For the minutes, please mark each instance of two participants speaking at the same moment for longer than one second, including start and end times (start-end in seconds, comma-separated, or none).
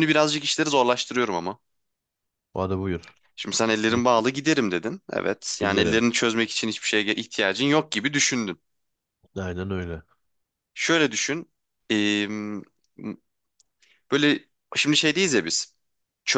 none